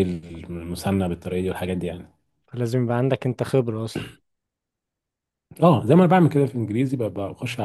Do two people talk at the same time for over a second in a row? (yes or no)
no